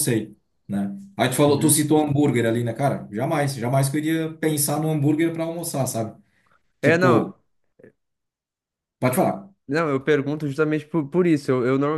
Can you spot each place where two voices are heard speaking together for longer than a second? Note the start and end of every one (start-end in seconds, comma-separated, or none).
none